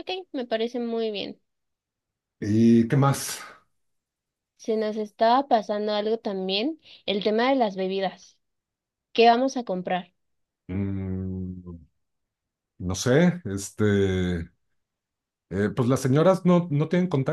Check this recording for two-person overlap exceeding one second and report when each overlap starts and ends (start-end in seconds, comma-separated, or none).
none